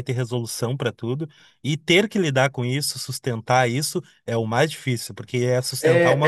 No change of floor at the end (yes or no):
no